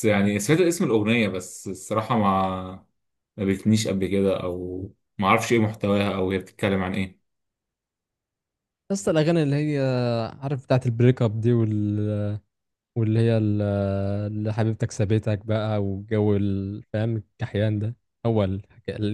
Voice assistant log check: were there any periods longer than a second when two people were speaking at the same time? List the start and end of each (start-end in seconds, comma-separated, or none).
none